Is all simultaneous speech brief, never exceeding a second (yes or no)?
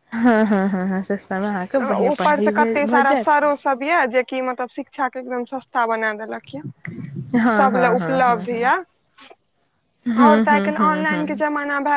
yes